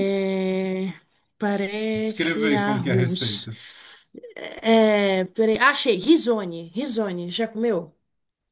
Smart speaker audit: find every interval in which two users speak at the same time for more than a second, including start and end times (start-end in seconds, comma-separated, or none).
1.9-3.5